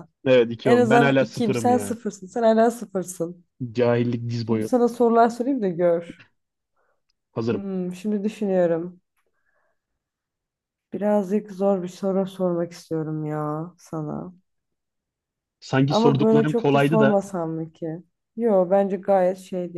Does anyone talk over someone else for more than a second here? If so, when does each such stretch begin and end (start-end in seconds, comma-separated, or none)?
0.7-2.0, 15.9-17.2